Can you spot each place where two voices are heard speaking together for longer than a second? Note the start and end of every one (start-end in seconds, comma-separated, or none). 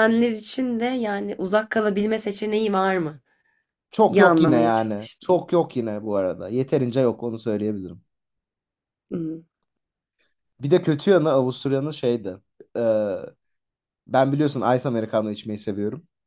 4.1-5.4